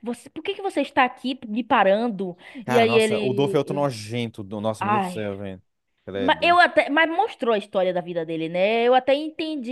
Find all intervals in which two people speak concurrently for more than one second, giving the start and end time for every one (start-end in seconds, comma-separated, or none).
2.6-3.9